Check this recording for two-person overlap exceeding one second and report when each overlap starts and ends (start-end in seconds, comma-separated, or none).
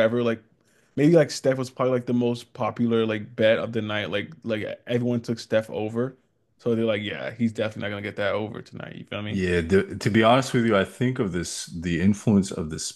none